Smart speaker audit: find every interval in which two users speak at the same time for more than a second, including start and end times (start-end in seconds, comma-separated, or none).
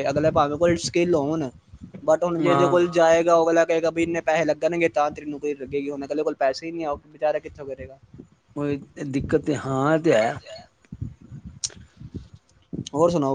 none